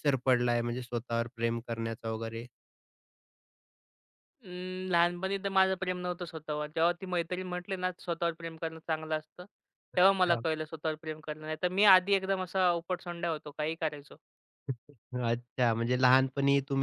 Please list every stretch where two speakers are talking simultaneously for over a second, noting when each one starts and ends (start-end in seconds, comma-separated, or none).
none